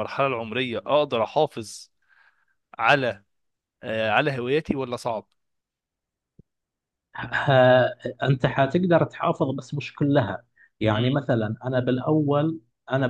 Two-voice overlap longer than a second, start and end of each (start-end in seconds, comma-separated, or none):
none